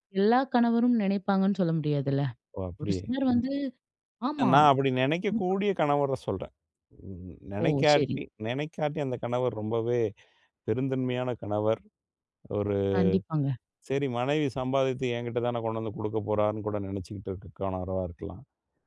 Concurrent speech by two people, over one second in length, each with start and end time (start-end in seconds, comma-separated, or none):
none